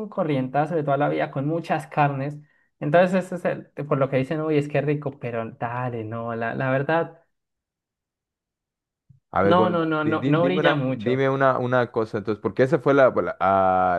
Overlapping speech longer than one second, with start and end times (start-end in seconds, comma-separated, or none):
9.4-11.3